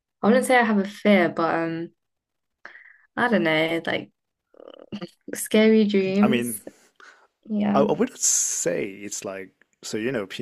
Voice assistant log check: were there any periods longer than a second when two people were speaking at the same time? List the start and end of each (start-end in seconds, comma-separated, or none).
none